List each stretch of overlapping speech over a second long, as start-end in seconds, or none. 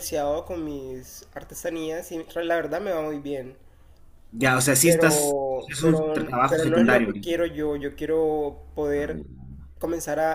4.8-7.3